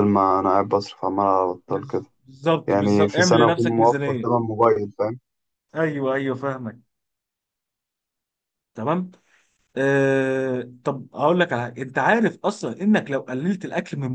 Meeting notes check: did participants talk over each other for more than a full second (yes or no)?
yes